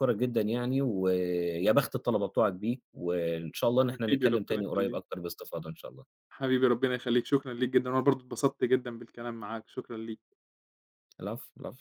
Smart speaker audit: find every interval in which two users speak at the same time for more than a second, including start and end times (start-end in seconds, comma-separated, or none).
3.8-5.0